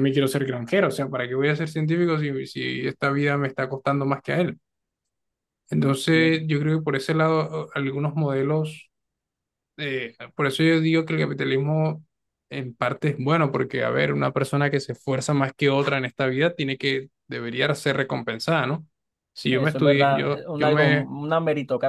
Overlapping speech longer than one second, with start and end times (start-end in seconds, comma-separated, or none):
19.5-21.1